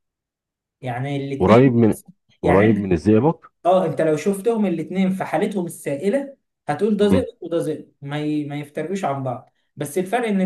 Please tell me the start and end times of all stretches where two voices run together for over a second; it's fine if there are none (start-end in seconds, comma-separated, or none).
none